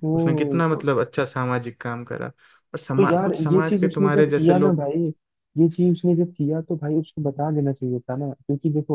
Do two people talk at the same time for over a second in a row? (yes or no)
yes